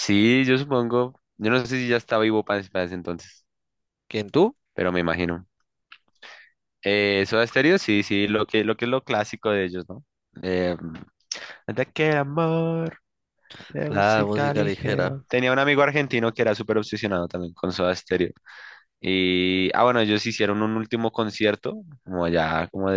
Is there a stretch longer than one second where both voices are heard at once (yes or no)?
yes